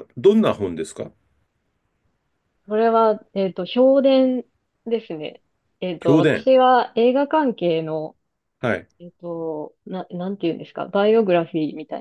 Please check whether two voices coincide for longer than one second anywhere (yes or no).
no